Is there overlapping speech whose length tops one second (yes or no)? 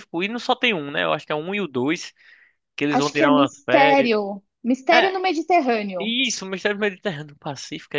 yes